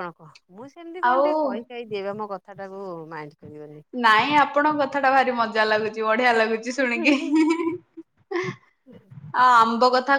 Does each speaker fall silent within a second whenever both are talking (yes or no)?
yes